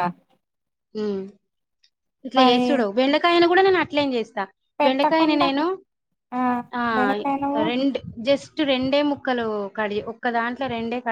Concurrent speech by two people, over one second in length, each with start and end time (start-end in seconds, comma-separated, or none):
none